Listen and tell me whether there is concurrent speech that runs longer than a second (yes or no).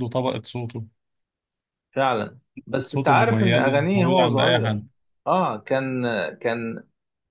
yes